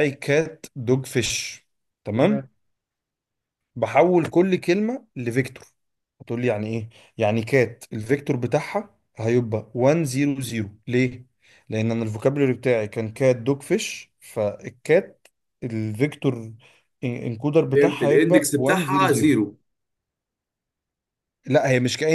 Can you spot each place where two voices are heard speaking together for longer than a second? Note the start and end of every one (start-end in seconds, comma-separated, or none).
17.7-19.3